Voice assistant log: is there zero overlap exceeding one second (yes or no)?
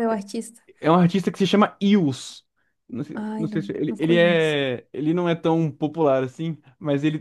no